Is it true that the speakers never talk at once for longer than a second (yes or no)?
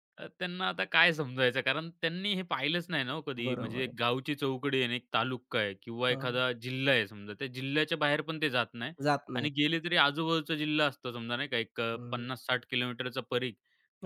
yes